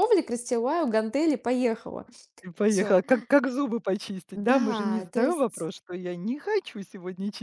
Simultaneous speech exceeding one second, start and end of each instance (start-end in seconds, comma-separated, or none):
4.3-5.7